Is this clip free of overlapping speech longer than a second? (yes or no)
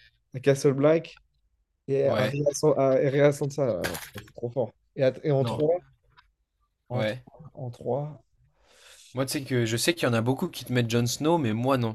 yes